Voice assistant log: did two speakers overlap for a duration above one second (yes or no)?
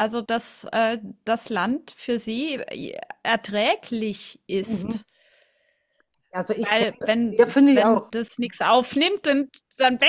yes